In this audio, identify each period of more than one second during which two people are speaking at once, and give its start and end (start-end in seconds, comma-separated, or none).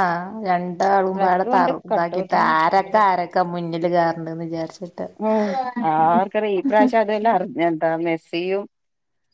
1.1-2.9